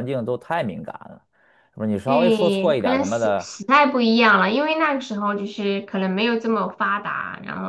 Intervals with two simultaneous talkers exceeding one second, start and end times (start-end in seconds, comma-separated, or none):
2.0-3.5